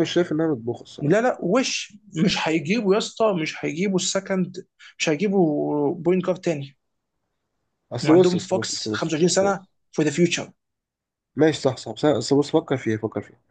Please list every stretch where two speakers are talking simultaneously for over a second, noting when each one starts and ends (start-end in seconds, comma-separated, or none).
8.0-9.7